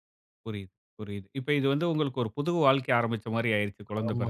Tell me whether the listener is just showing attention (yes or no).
no